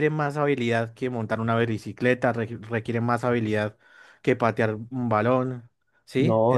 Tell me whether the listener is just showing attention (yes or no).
no